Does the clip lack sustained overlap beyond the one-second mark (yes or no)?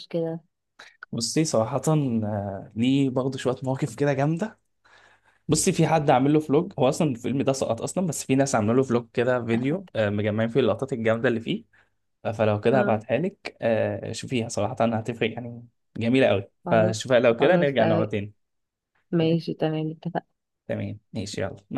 no